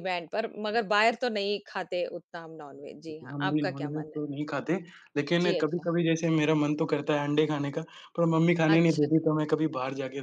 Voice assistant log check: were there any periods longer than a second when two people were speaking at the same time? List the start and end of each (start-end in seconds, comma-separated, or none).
2.7-4.2